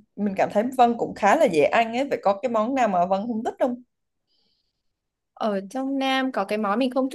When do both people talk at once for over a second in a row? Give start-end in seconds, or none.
none